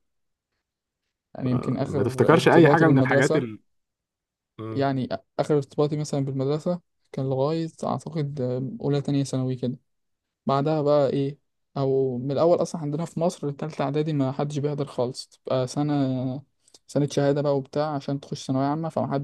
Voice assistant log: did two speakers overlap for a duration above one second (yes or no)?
yes